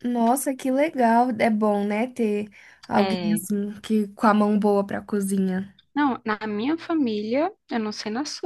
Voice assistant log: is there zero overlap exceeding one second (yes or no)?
yes